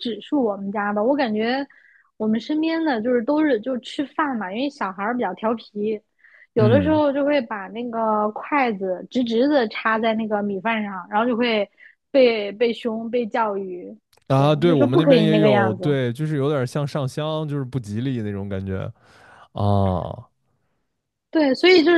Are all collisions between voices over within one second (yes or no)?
no